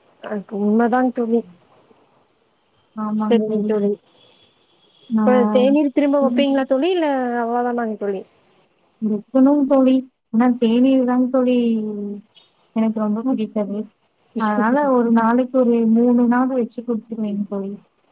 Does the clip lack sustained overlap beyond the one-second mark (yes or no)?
no